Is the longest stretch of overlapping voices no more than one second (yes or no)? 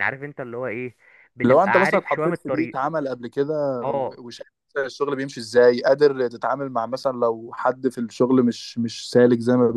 no